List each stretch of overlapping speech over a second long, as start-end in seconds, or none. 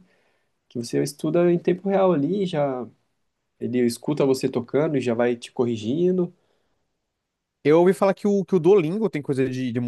none